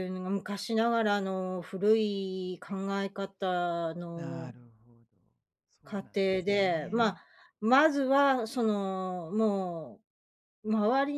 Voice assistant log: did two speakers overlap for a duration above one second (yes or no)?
yes